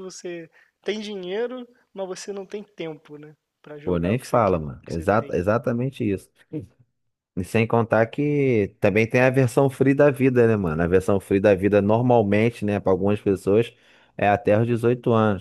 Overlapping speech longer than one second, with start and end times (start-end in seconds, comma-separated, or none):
3.8-5.4